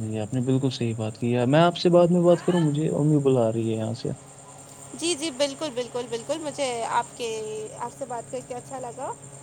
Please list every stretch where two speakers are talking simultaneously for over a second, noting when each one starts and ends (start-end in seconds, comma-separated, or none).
none